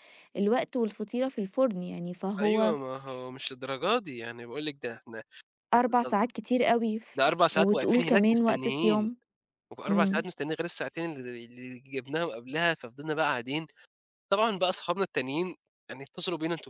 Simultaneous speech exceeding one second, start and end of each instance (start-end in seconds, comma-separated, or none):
7.2-9.1